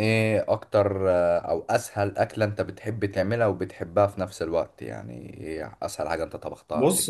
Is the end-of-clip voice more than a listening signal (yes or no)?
yes